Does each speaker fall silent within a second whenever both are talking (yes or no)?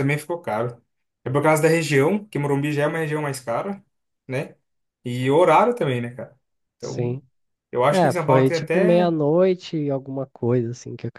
no